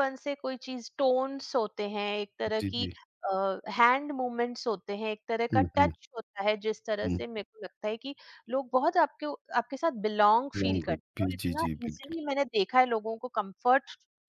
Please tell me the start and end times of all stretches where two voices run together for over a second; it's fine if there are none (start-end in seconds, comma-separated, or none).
10.6-12.1